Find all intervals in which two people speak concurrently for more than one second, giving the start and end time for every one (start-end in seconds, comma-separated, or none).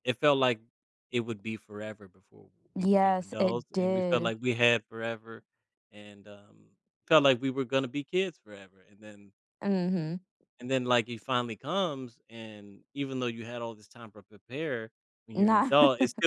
2.8-4.3